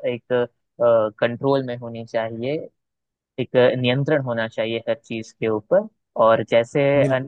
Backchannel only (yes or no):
yes